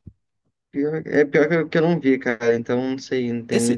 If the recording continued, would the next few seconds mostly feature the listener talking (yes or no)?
yes